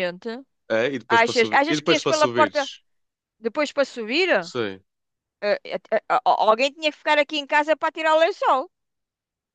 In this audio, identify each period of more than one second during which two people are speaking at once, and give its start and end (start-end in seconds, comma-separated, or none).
1.2-2.6